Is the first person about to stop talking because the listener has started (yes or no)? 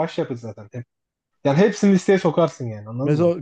yes